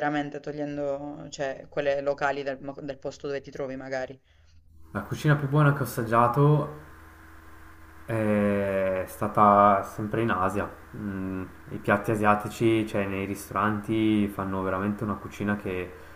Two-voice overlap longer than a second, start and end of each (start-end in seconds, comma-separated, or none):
none